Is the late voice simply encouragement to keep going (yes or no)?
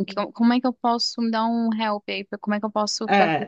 no